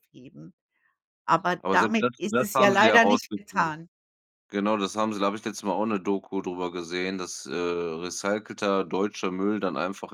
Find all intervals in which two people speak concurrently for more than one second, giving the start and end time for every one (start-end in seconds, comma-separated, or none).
1.6-3.7